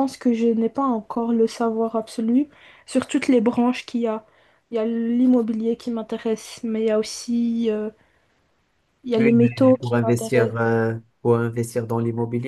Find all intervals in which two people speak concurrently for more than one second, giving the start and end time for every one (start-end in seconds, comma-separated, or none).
9.2-10.5